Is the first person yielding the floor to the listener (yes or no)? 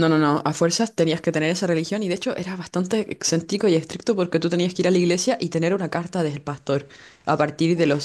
no